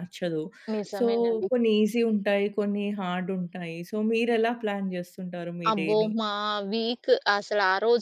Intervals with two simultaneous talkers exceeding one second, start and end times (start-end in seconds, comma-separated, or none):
none